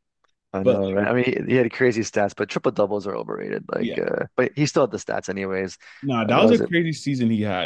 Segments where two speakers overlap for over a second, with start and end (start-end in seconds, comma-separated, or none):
none